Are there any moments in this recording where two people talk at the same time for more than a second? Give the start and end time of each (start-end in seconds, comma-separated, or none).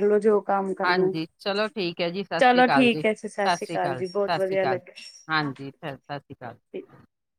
2.4-4.8